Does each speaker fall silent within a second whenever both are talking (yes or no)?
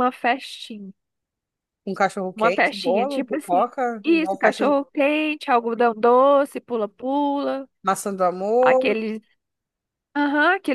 no